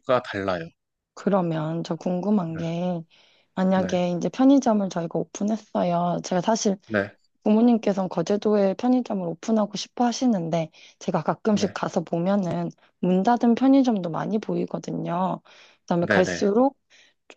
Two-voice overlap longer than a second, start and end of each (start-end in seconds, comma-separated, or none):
none